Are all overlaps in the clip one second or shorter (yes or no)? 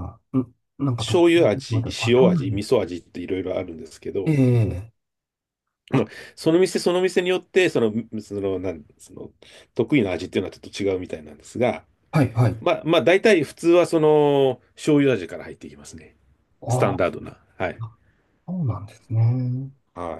no